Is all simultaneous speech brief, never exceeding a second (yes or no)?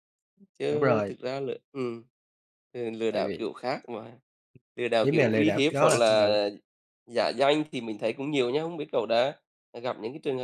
no